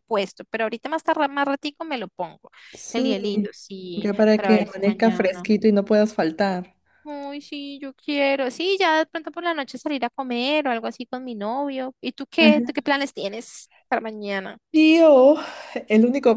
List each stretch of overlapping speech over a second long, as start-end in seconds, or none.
4.0-5.5